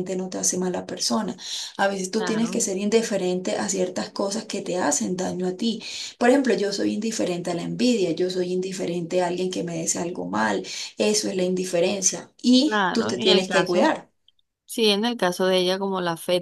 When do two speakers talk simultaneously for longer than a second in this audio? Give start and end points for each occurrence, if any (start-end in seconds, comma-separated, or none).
12.6-13.9